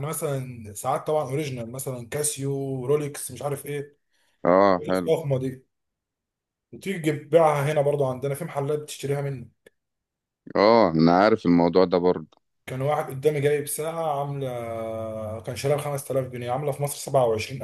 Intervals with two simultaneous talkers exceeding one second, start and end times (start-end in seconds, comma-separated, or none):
none